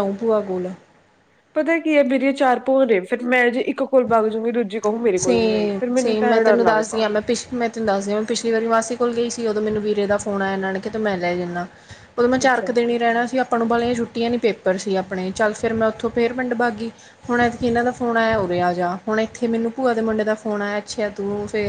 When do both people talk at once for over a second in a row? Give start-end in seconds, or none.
5.2-7.0